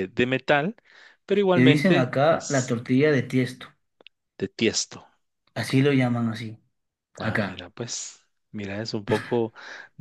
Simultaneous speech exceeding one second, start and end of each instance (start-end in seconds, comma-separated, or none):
1.6-2.8